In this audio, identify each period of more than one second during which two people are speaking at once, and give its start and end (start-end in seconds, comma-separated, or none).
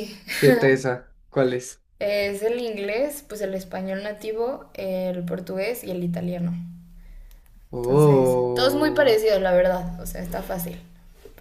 7.8-9.2